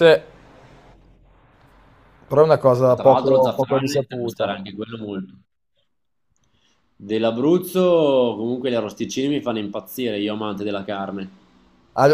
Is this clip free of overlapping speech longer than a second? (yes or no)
no